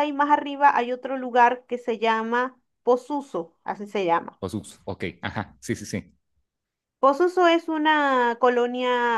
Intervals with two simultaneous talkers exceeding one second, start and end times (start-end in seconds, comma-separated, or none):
none